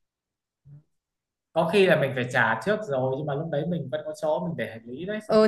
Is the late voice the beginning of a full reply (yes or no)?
yes